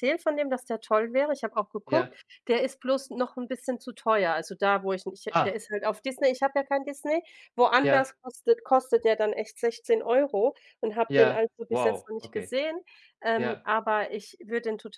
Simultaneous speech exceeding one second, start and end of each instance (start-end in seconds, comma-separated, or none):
11.2-12.5